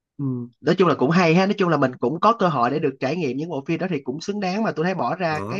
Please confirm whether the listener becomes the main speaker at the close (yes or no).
no